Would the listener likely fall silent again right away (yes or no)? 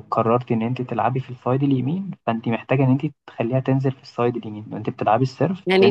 no